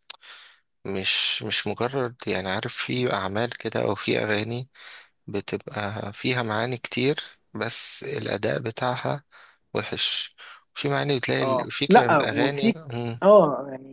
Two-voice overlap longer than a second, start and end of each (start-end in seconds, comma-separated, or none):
11.4-12.8